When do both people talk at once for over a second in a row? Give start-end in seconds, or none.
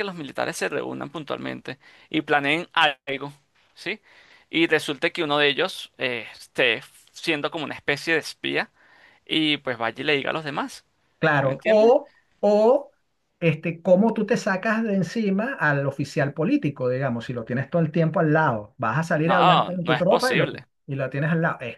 19.2-20.5